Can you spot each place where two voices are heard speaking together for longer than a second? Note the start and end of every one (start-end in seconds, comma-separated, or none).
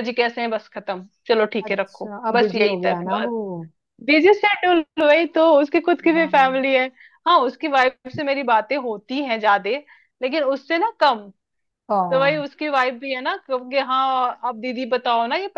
1.6-3.1